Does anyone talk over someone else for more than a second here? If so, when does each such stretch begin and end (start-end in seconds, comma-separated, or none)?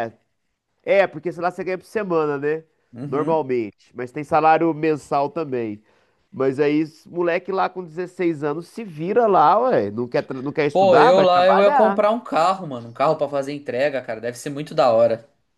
10.7-12.0